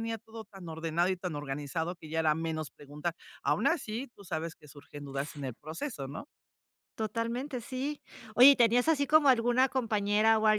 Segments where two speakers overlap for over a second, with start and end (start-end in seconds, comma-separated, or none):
none